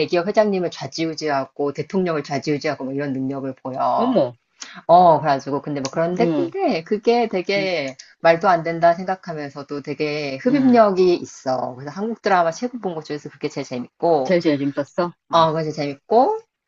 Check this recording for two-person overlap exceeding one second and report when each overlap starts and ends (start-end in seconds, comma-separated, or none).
none